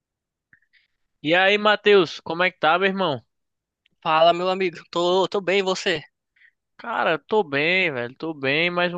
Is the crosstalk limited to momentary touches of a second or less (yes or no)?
yes